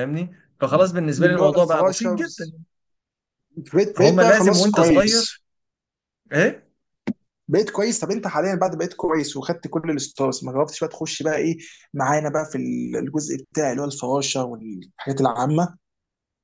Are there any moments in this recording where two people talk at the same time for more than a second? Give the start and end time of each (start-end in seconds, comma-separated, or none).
1.2-2.5, 3.9-5.4